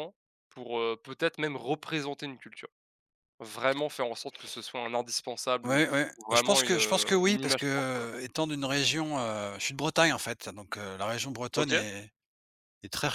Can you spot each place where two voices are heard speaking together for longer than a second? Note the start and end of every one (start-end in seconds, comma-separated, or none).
5.6-7.7